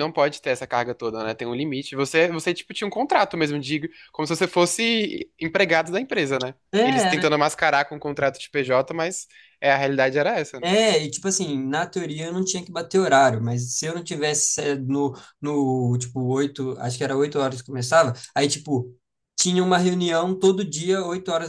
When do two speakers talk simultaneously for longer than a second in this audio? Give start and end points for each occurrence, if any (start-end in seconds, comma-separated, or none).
none